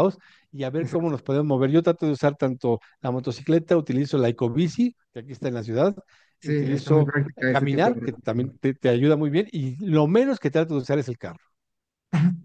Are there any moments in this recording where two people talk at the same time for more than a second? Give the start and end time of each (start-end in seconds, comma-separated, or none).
6.4-8.4